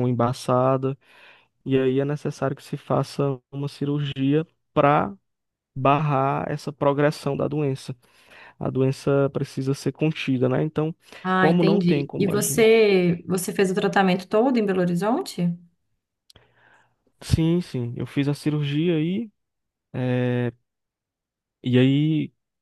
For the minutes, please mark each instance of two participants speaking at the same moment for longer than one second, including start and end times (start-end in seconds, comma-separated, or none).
11.3-12.9